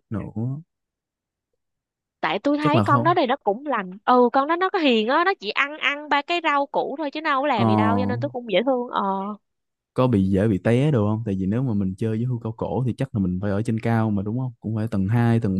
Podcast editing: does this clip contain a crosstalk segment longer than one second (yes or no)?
no